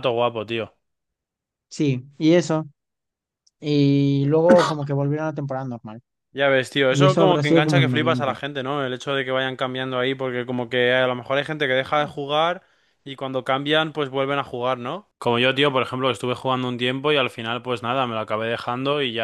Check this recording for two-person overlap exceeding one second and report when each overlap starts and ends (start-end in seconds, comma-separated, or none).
6.9-8.4